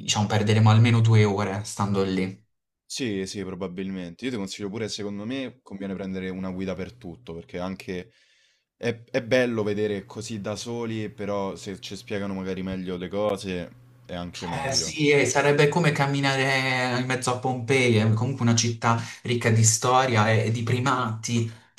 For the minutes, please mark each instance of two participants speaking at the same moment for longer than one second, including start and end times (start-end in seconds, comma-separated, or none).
none